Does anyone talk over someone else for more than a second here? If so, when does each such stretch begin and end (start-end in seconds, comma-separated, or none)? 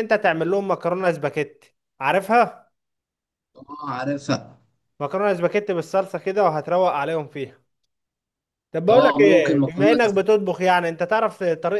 8.9-10.2